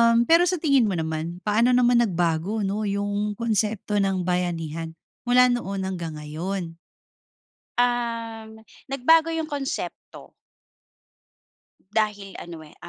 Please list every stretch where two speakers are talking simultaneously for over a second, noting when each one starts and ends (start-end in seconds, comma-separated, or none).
none